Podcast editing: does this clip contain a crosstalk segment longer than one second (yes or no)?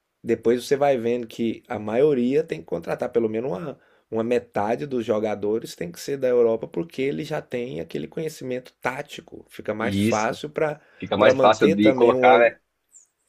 yes